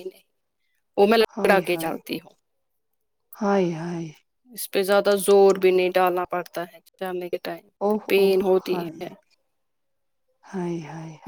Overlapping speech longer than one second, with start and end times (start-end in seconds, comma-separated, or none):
none